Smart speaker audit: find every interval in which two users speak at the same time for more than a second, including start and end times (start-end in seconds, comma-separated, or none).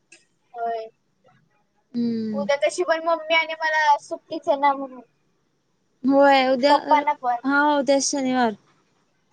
none